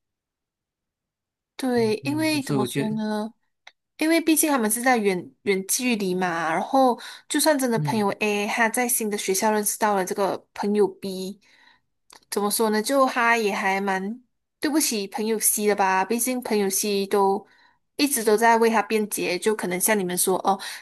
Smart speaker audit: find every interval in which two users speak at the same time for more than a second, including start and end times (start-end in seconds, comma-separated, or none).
1.8-3.0